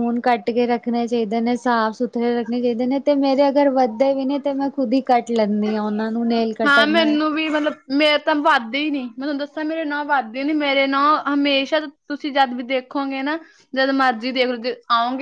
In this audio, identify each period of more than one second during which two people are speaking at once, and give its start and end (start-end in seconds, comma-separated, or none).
none